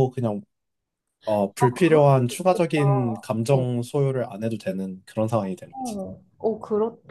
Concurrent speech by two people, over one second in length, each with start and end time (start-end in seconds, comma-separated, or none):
1.6-3.3